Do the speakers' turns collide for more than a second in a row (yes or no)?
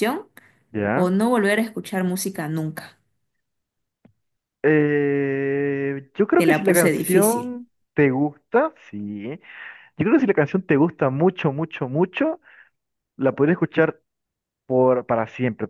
yes